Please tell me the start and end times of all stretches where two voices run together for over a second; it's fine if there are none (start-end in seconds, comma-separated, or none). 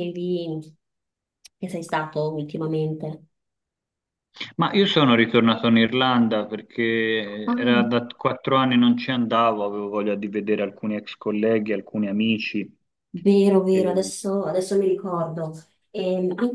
none